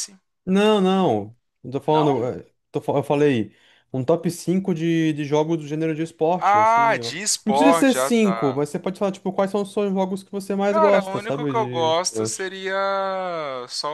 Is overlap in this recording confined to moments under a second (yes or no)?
no